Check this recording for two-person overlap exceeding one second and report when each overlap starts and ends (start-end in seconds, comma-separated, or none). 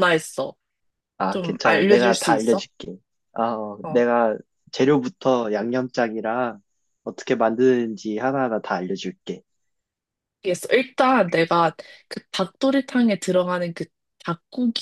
1.3-2.6